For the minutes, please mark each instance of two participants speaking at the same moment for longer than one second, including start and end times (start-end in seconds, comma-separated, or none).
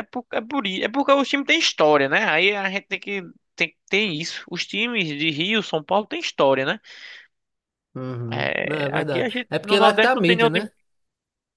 8.3-10.7